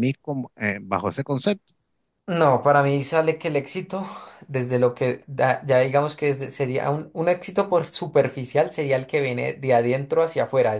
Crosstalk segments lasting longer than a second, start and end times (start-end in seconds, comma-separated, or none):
none